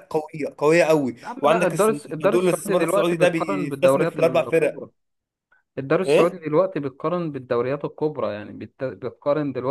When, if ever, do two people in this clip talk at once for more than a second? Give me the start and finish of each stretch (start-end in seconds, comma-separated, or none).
1.2-4.8